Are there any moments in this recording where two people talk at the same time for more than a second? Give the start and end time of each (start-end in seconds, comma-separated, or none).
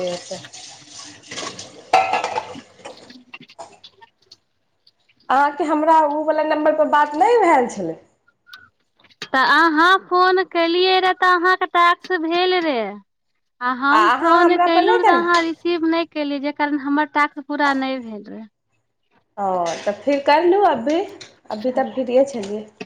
13.9-15.4